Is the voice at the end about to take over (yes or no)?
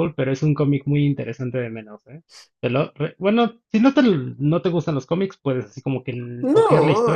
yes